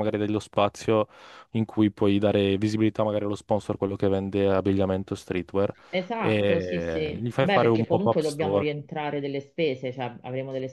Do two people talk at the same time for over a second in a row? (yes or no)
yes